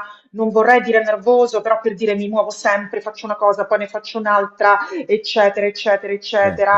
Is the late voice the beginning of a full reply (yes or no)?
no